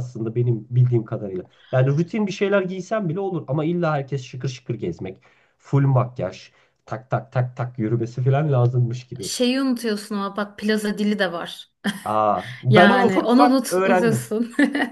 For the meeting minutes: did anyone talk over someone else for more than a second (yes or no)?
yes